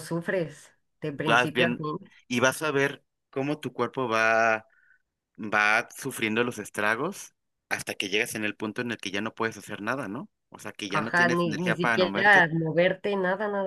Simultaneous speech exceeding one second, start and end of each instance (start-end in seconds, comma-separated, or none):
10.9-12.5